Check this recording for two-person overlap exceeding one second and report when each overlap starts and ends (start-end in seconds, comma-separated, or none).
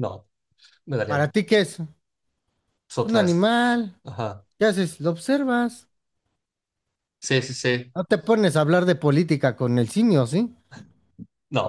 none